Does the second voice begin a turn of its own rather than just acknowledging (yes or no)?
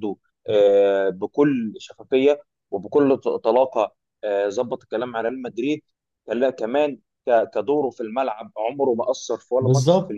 yes